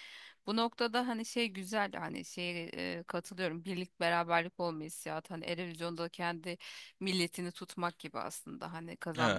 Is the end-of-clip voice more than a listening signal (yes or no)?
no